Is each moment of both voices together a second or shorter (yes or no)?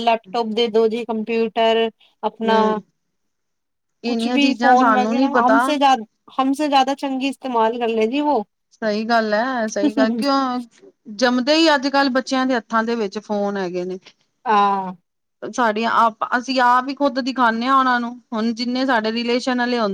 no